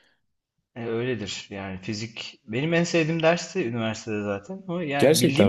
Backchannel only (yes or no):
yes